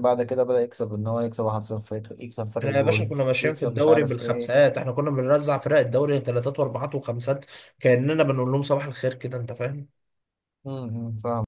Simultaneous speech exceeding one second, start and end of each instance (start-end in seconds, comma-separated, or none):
2.6-4.5